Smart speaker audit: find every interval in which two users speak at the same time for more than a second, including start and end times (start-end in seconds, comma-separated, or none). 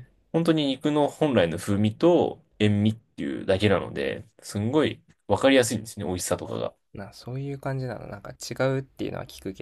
none